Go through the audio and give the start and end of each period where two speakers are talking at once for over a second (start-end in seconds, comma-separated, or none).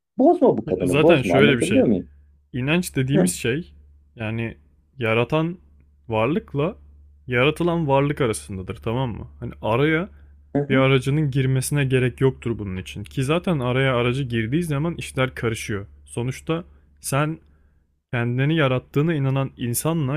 0.7-1.9